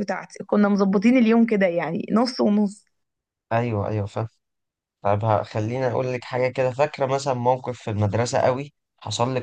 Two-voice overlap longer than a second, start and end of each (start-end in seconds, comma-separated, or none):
none